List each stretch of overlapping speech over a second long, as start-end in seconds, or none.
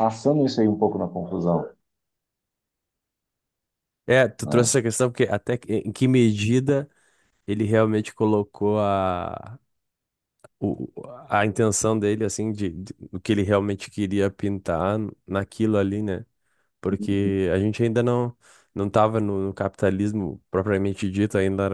none